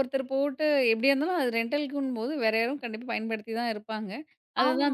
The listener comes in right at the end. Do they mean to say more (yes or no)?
no